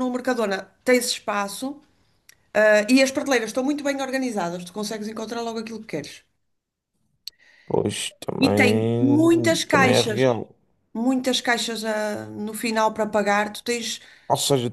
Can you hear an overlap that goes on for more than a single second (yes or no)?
yes